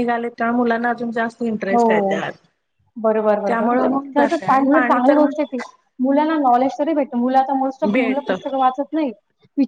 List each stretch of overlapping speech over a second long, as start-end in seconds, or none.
3.5-5.2